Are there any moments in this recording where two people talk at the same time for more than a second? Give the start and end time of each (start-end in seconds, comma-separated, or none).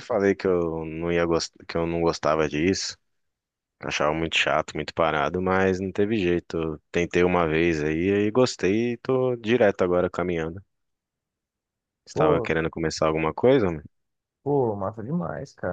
none